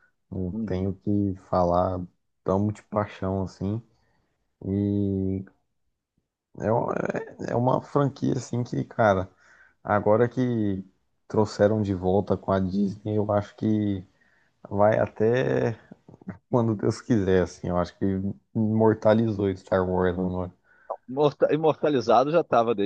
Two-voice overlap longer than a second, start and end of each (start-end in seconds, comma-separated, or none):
none